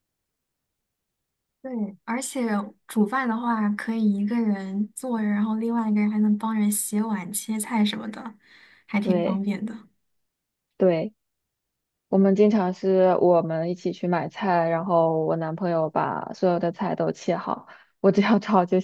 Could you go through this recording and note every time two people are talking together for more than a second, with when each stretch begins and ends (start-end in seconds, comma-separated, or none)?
none